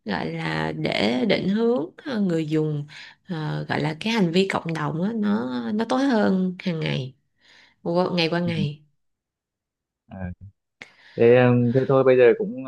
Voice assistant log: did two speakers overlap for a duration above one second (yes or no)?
no